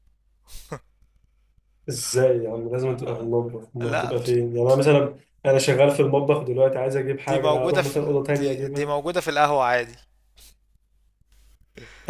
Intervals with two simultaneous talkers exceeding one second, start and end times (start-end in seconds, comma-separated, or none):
7.3-8.9